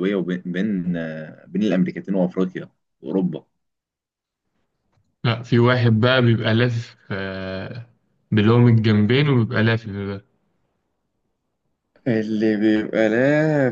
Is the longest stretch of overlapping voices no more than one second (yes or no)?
yes